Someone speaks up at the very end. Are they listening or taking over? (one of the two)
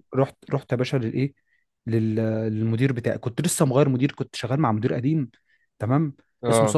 listening